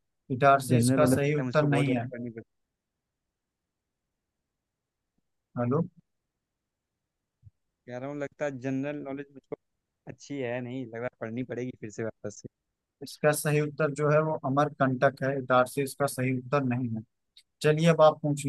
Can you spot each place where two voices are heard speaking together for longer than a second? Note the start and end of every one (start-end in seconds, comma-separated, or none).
0.7-2.1